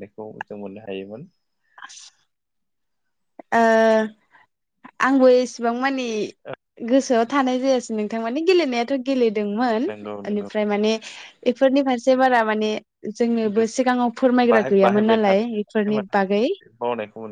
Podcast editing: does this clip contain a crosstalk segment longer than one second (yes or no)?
yes